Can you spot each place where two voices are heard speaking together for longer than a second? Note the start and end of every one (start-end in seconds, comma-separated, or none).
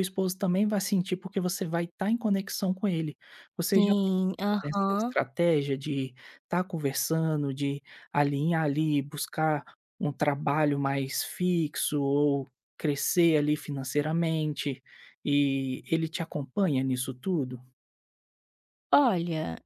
3.7-5.2